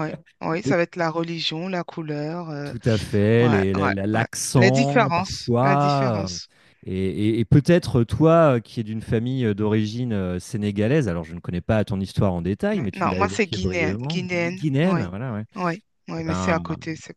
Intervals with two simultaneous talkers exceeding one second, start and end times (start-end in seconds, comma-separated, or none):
3.4-6.4, 12.7-15.1